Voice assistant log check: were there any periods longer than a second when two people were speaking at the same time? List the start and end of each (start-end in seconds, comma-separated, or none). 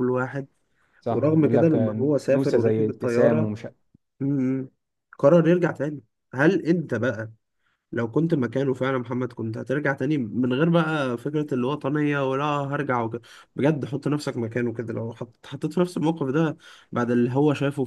1.1-3.5